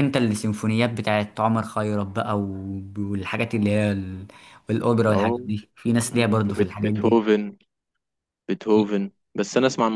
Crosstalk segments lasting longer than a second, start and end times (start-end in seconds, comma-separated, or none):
6.0-7.3